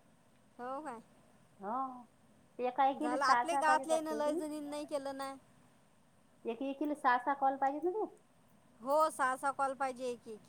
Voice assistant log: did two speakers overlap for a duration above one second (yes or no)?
yes